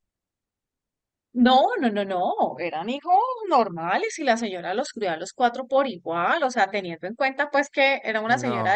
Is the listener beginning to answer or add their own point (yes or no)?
no